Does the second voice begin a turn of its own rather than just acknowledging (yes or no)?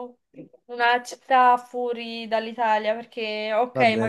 no